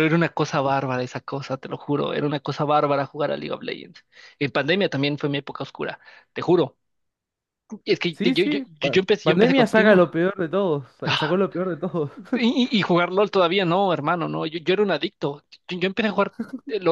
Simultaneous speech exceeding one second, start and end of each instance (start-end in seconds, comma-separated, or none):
8.1-10.0